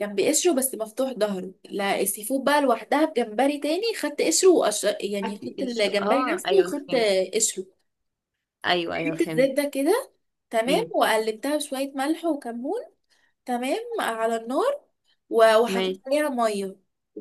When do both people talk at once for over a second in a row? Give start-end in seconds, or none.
5.2-6.9